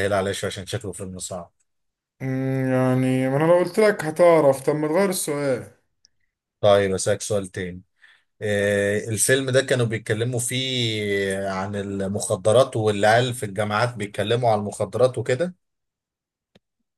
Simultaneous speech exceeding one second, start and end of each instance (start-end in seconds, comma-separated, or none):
none